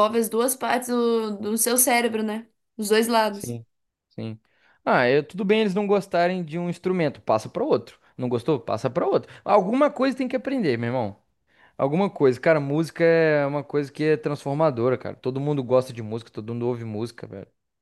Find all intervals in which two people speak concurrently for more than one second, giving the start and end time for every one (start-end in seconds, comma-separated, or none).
none